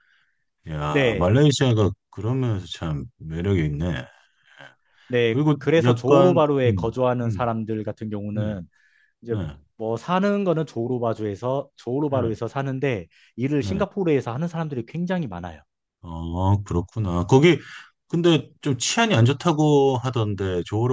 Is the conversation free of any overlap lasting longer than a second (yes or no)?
no